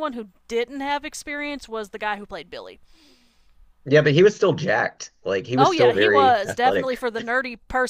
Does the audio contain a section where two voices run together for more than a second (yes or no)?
yes